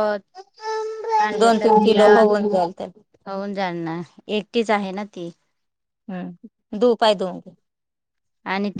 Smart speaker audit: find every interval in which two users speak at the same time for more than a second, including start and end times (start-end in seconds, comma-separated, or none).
1.4-3.0